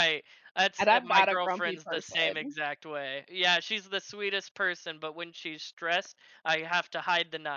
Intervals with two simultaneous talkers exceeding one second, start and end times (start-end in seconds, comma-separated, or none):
0.8-2.5